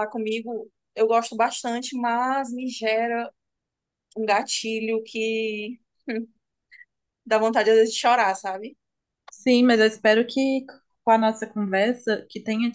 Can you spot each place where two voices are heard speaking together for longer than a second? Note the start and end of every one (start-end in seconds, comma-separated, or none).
none